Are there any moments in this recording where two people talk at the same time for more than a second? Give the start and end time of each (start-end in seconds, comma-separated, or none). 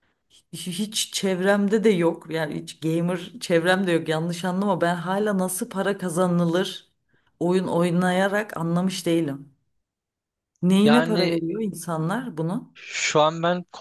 none